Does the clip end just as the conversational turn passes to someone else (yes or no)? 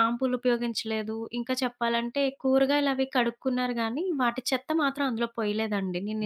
yes